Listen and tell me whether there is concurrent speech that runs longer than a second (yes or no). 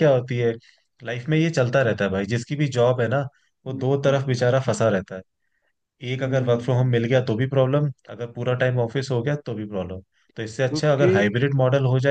no